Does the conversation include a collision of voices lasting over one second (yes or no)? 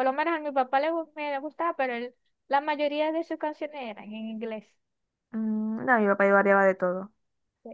no